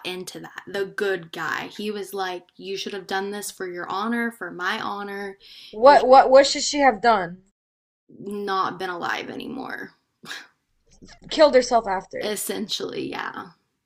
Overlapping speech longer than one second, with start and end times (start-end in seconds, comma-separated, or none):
none